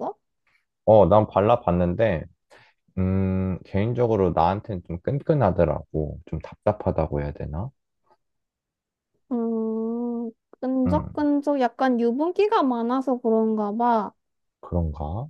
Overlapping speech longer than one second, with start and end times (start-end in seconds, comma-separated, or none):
none